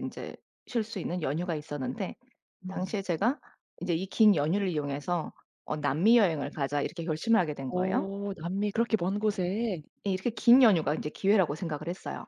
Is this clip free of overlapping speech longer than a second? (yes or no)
yes